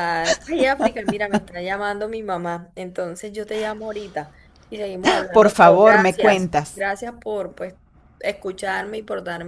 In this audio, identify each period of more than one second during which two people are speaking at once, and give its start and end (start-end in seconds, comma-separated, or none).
5.3-6.8